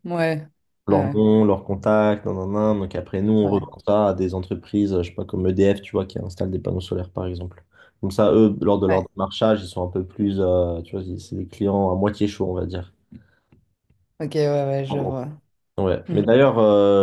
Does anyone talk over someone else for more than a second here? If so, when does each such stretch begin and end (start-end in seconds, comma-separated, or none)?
none